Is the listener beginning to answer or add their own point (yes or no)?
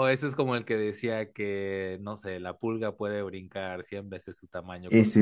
no